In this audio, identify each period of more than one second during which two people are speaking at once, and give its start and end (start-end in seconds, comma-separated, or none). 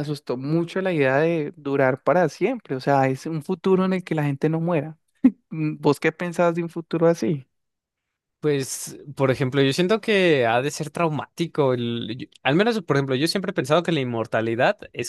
none